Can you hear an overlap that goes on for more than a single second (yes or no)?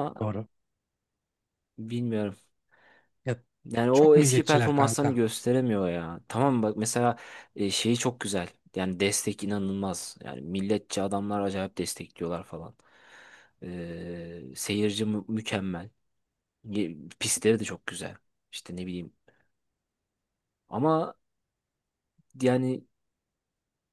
yes